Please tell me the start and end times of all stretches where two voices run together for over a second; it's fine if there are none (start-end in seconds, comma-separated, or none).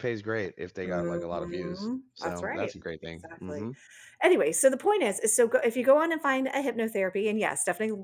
0.8-3.7